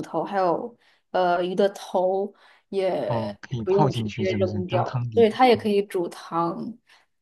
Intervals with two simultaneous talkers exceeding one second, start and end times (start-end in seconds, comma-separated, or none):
3.0-5.7